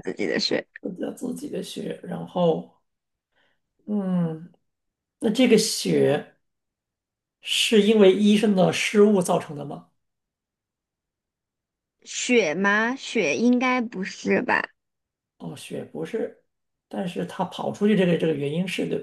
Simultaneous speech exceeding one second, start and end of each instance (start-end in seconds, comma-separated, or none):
none